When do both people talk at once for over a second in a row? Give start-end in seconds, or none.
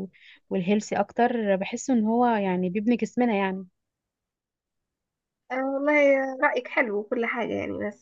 none